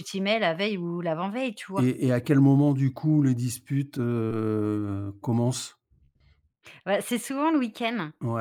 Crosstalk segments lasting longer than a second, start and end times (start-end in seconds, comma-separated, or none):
none